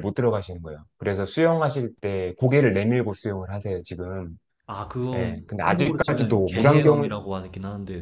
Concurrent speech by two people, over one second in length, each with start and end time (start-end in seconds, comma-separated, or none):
5.1-7.1